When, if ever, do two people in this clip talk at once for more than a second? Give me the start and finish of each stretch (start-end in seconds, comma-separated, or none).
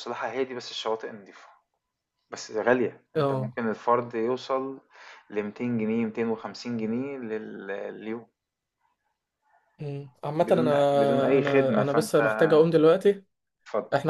10.4-12.2